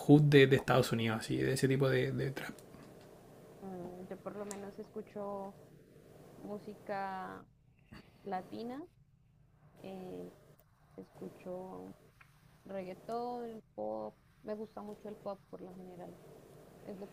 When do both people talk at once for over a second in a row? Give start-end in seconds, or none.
none